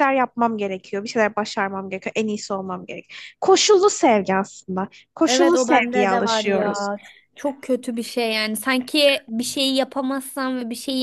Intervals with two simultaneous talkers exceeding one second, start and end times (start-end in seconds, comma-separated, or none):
5.3-6.9